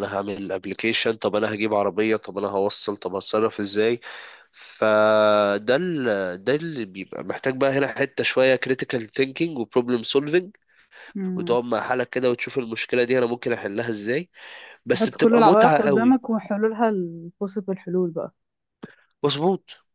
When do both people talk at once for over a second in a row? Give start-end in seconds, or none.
14.9-16.2